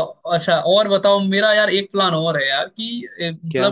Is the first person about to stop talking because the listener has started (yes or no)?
no